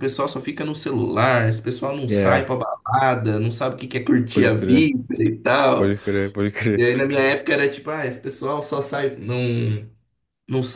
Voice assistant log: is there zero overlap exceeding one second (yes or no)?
yes